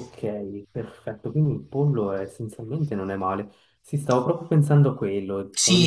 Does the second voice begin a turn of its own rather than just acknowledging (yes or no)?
yes